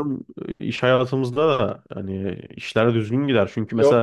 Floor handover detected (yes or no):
no